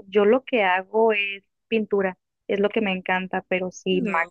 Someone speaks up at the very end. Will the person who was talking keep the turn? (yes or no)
yes